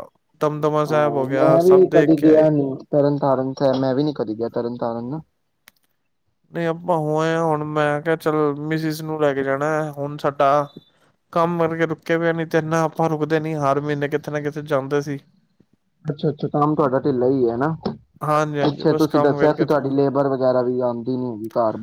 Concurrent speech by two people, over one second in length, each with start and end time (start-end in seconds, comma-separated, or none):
0.9-2.5